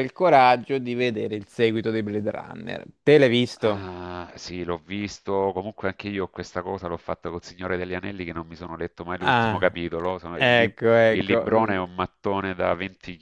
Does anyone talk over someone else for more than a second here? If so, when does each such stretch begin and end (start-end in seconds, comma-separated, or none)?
10.3-11.8